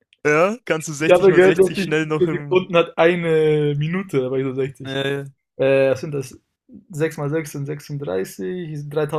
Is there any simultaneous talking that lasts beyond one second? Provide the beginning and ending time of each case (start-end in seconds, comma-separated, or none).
1.0-2.6